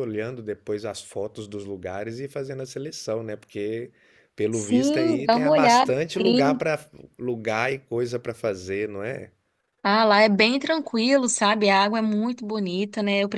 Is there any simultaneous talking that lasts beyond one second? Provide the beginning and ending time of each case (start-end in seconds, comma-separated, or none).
4.5-6.7